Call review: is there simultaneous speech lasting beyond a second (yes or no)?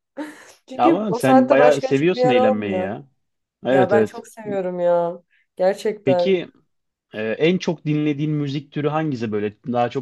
yes